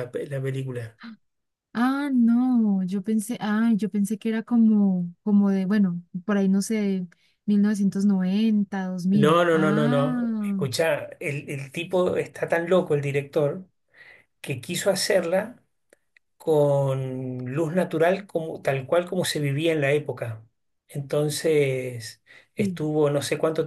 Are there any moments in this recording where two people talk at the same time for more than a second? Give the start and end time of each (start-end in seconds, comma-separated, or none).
9.1-10.6